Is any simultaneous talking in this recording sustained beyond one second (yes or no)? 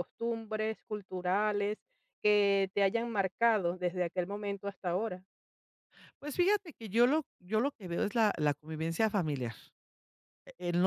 no